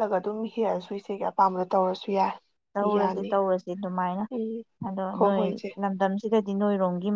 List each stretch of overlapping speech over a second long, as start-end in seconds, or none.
none